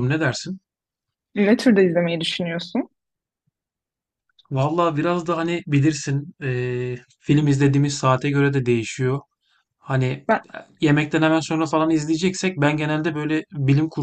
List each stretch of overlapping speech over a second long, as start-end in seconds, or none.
none